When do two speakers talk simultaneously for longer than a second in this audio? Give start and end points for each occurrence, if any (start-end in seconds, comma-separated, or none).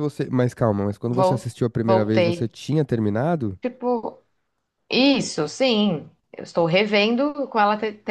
1.2-2.5